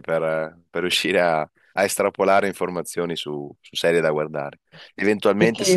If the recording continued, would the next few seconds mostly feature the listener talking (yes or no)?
no